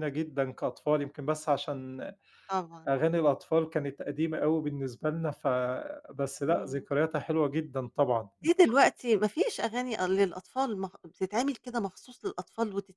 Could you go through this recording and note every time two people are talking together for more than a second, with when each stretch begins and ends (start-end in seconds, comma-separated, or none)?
none